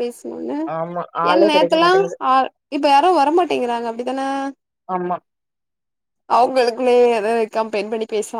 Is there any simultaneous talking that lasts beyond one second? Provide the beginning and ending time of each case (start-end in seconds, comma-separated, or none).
none